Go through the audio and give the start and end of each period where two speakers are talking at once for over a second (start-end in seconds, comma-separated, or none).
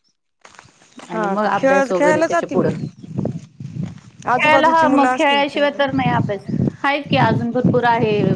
1.1-2.7, 4.4-6.0